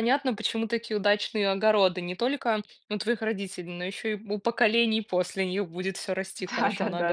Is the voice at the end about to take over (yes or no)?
yes